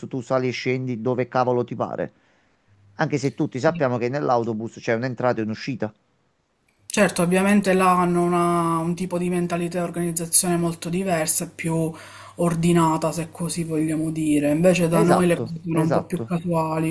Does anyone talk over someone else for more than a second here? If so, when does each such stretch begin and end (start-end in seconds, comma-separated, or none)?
14.9-16.4